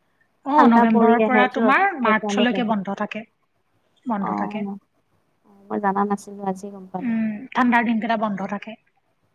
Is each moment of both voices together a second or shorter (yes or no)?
no